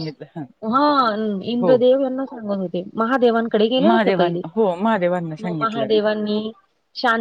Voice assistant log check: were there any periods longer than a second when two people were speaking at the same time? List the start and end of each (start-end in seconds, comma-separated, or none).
none